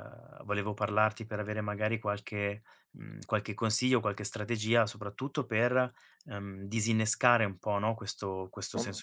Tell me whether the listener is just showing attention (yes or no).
yes